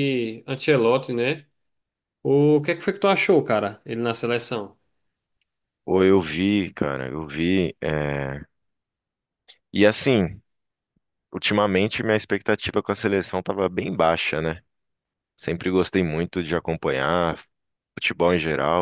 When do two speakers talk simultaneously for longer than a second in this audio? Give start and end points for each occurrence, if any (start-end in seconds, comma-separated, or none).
none